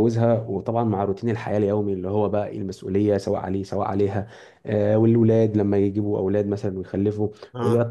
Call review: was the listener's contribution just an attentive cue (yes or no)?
yes